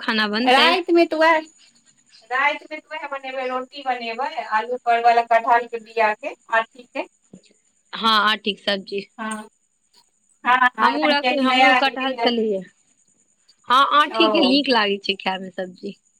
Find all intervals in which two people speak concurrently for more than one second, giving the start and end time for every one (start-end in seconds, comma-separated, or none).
10.9-12.4